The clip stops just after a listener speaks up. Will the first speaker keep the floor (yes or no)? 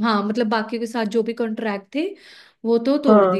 yes